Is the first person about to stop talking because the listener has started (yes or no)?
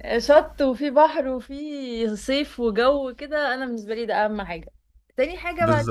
yes